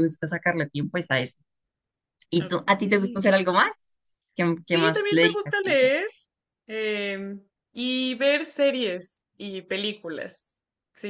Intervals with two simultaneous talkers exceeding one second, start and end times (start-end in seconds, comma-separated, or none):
4.6-6.0